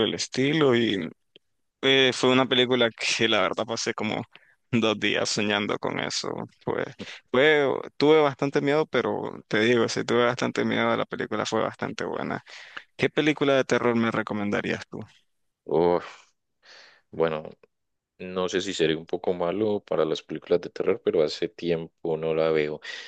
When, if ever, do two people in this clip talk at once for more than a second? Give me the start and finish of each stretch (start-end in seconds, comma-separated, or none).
none